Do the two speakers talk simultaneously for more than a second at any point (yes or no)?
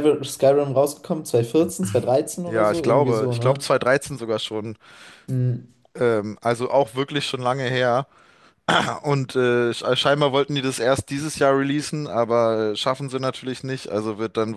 yes